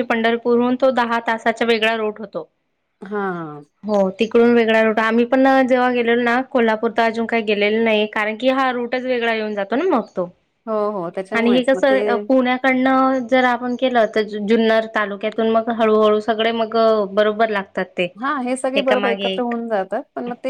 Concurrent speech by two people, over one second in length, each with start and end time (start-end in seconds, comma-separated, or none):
none